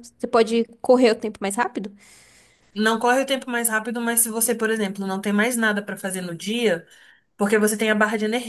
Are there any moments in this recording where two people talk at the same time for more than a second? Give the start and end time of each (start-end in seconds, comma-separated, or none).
none